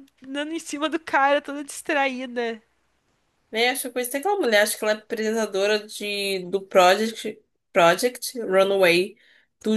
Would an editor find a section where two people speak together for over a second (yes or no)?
no